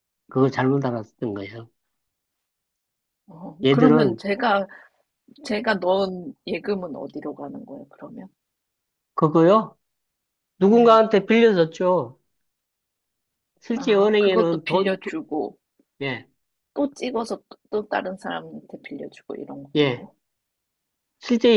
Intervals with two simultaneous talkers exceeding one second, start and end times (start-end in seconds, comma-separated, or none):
13.7-15.2